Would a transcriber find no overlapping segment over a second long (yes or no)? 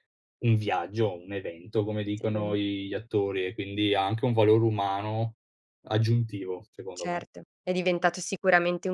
yes